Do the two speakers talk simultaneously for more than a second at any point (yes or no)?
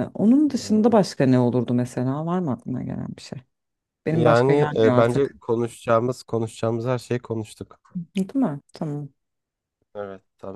yes